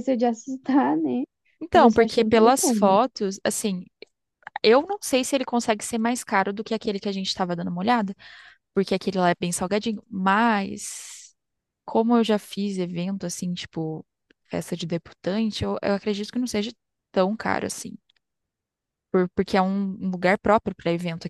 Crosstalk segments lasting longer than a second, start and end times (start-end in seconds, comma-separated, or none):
1.7-3.0